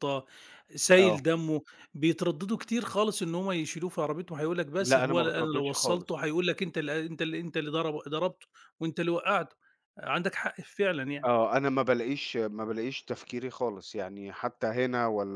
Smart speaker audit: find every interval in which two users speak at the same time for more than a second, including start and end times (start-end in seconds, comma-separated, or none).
4.8-6.2